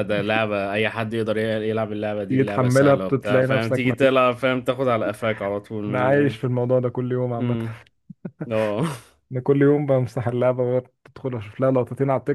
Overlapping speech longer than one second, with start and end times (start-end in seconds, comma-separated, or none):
2.3-4.1